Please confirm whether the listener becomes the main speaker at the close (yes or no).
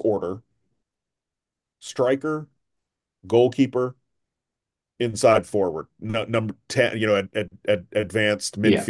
no